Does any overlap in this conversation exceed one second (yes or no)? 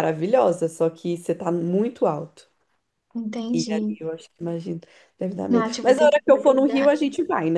yes